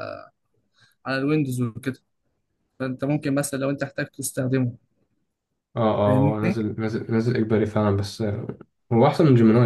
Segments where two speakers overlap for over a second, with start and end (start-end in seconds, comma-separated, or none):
none